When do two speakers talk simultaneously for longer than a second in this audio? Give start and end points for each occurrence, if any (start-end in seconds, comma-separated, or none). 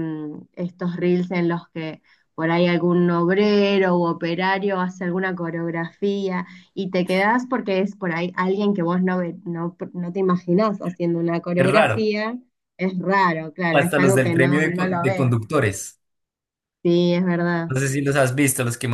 13.7-15.3